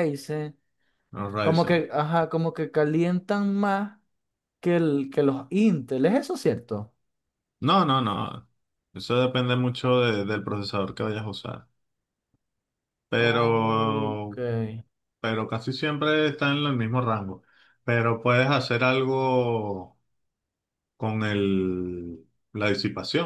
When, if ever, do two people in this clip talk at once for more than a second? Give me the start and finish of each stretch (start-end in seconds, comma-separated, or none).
13.2-14.3